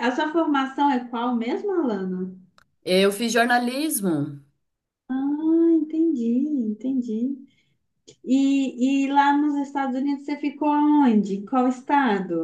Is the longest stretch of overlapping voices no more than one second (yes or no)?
yes